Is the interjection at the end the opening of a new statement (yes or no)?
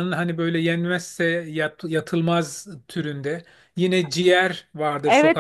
yes